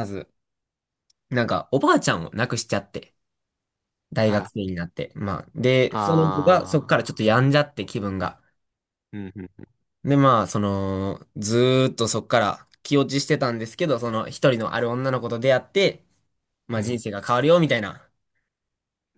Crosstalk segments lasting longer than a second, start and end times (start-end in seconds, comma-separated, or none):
5.9-7.2